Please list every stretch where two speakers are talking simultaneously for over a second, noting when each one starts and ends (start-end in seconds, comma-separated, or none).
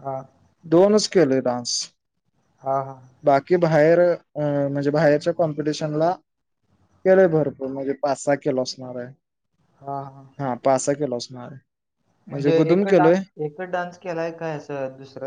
none